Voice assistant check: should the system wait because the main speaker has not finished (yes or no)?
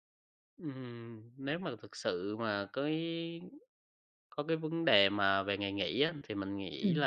yes